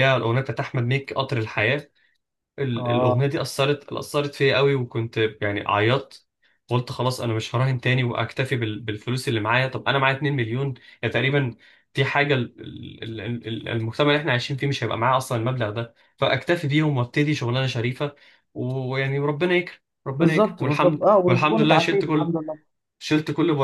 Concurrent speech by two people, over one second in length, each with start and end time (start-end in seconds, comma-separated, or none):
20.1-22.3